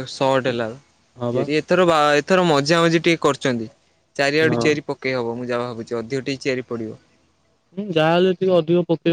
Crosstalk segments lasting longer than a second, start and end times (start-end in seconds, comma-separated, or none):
none